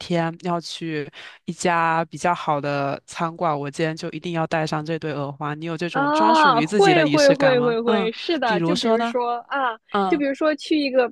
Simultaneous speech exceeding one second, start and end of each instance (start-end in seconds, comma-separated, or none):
5.9-9.2